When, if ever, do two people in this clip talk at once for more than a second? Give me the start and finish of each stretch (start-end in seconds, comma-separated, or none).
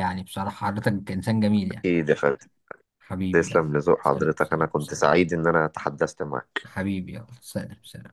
3.3-5.1